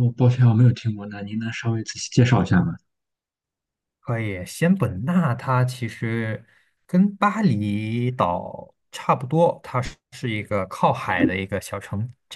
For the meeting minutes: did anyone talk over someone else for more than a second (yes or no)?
no